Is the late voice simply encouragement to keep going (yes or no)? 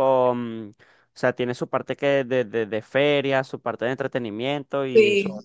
no